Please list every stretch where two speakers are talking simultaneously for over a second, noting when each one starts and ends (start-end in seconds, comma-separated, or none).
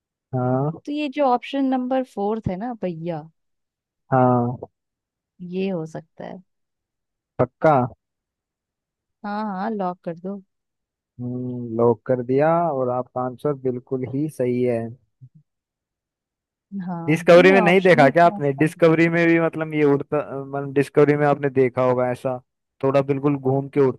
17.1-18.8